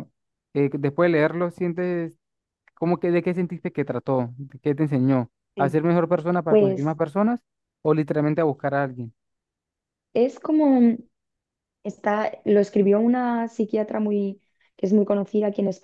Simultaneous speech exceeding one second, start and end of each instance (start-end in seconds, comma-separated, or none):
none